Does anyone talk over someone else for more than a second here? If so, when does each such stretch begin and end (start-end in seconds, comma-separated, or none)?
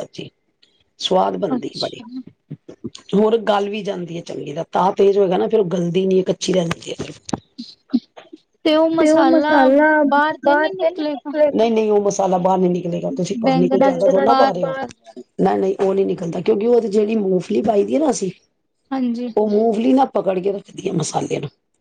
13.4-15.1